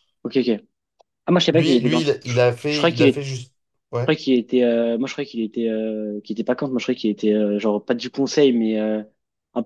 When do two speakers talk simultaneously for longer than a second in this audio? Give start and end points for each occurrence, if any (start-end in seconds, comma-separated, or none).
1.5-3.2